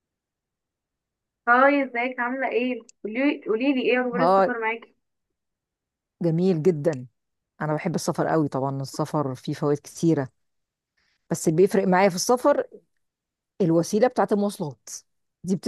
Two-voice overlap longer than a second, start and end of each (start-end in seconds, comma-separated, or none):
none